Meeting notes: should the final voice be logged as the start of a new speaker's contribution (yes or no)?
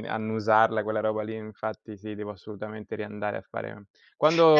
no